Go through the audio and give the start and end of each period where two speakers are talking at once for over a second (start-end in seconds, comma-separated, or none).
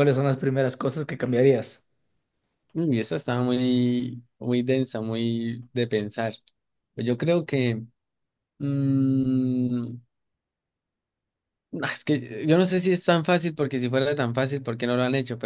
none